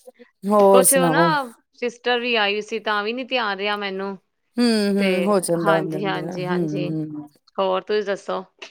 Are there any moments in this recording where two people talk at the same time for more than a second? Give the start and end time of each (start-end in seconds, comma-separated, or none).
none